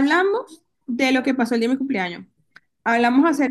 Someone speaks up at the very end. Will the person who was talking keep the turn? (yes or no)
yes